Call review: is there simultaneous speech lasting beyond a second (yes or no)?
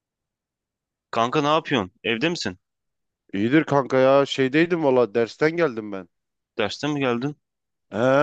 no